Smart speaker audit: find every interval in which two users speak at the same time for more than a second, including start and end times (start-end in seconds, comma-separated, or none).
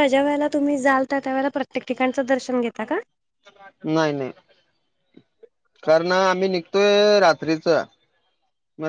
none